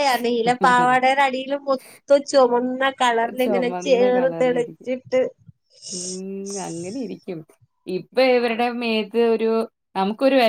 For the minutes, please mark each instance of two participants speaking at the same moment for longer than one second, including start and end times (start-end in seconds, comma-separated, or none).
3.4-4.9